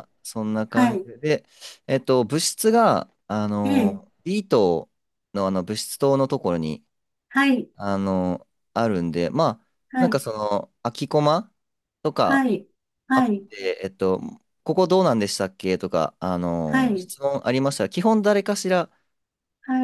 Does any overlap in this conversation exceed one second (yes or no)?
no